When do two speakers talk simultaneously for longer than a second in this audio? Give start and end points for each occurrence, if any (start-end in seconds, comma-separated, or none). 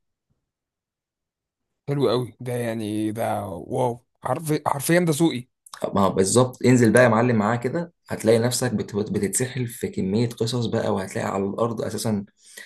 none